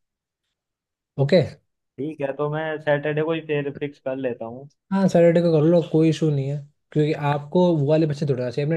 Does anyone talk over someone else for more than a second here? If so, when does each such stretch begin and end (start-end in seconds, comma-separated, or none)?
none